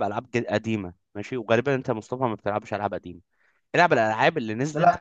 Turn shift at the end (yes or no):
no